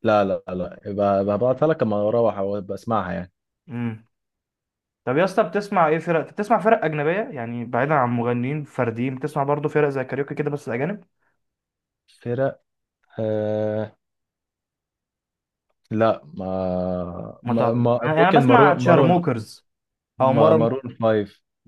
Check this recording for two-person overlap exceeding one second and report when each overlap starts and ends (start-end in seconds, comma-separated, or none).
17.4-19.2